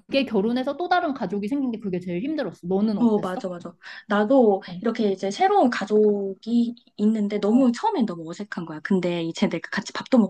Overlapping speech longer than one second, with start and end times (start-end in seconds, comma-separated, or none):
none